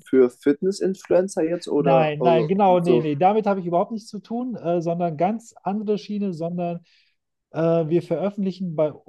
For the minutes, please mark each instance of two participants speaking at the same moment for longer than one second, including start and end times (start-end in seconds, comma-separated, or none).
1.8-3.1